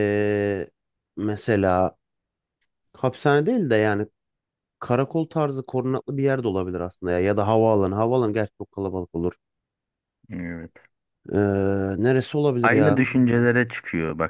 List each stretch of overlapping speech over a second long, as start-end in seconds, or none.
none